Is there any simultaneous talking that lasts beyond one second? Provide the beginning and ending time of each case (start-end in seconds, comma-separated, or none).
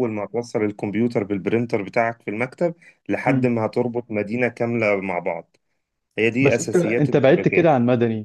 6.4-7.7